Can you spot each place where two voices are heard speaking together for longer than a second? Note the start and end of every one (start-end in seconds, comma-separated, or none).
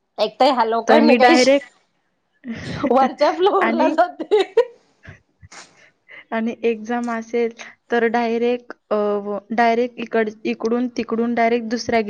none